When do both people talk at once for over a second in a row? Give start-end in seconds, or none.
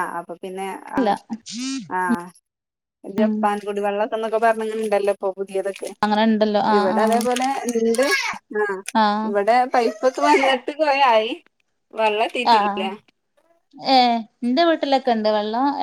none